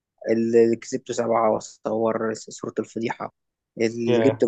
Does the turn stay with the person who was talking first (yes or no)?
yes